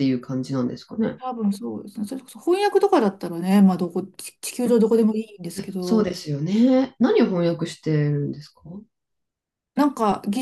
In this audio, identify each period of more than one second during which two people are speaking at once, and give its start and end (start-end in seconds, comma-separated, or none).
none